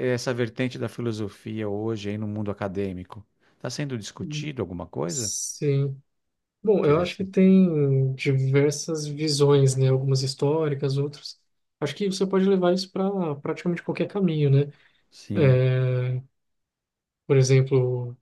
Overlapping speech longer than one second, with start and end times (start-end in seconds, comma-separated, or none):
none